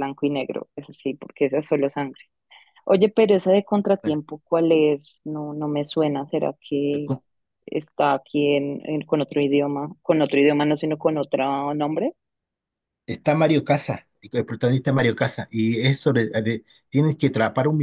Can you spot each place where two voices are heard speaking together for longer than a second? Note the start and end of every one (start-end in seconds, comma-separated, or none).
none